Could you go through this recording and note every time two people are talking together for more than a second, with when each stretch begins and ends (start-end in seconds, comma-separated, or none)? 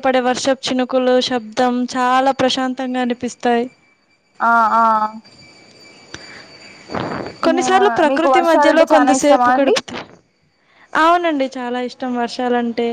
7.5-9.8